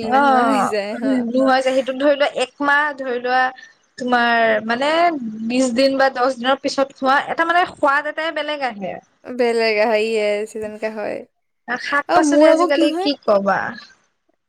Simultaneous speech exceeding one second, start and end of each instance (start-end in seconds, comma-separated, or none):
none